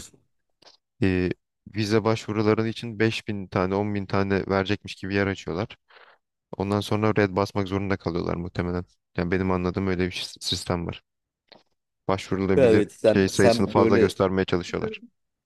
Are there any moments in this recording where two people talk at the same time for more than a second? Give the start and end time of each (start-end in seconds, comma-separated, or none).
12.6-14.1